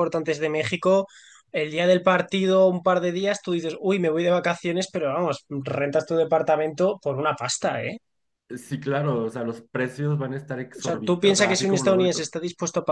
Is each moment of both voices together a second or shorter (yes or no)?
no